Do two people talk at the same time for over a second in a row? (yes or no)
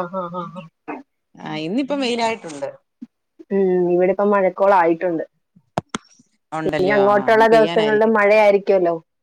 yes